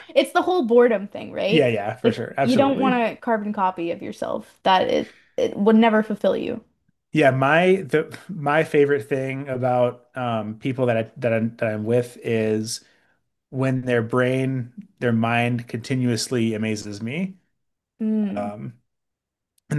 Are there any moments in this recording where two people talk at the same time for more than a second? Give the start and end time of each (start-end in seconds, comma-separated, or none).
1.5-3.0